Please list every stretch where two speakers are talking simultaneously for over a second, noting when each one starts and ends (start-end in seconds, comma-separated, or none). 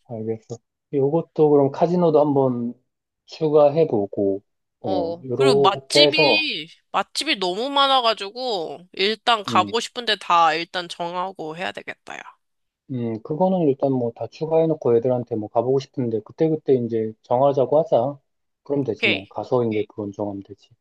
4.8-6.5